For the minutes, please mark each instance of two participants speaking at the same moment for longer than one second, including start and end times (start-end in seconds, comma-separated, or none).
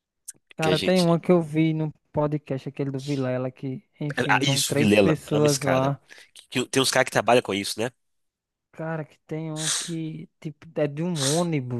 4.3-5.9